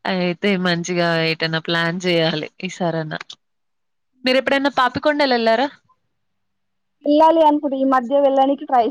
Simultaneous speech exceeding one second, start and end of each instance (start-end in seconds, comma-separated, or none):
none